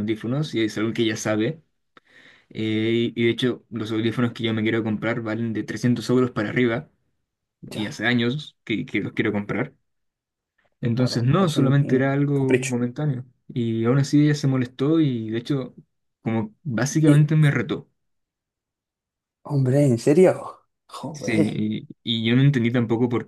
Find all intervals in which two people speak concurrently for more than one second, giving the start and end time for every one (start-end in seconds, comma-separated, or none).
10.9-12.8